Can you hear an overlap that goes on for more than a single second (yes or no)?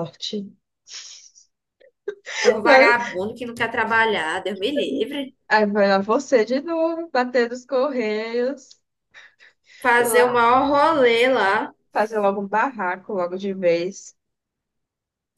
no